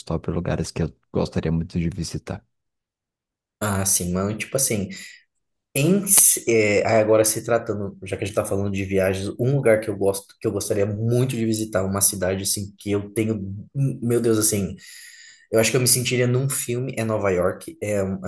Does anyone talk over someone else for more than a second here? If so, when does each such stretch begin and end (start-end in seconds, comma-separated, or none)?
none